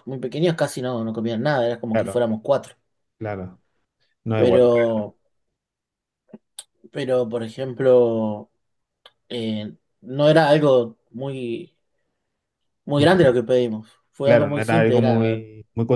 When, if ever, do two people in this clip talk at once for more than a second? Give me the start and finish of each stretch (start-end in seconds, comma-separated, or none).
14.2-15.4